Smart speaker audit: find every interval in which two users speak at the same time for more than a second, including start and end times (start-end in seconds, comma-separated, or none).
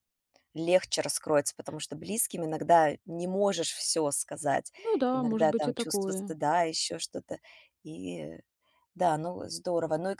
5.1-6.3